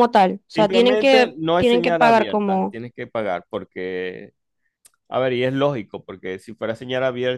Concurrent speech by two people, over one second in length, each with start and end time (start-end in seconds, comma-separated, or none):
0.6-2.8